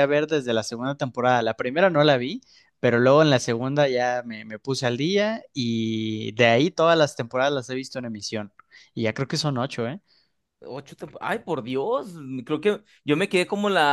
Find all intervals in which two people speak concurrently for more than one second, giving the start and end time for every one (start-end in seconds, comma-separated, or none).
none